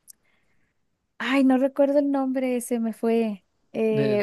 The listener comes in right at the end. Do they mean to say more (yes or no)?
no